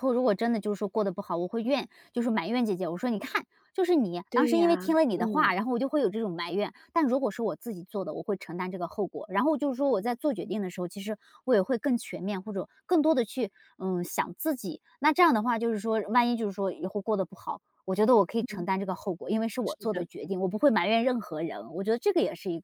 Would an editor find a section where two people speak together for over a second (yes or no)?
yes